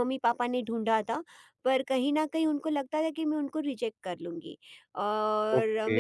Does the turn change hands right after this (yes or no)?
no